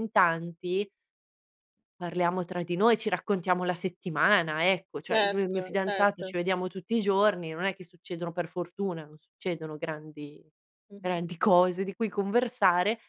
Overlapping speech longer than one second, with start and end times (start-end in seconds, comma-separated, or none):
5.1-6.3